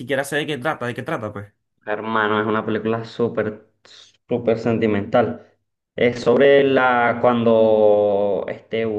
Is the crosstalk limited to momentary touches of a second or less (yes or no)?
yes